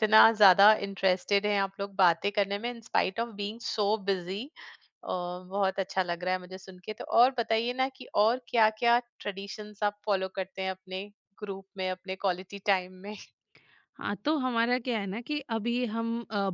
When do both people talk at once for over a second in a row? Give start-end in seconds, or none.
none